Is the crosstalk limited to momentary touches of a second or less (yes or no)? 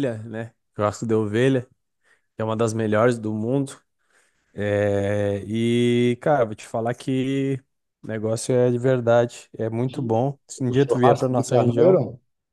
no